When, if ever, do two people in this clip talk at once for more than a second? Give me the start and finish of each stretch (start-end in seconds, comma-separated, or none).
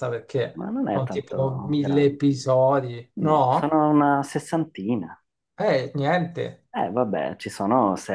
0.6-2.2